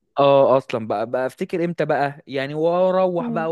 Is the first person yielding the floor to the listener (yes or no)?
no